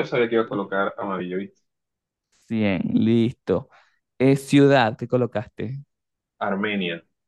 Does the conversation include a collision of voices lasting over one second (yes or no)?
no